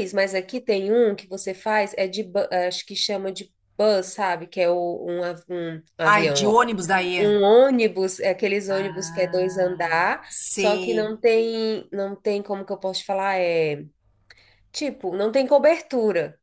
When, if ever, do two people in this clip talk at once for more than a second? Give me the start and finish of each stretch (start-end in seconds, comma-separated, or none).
8.7-11.2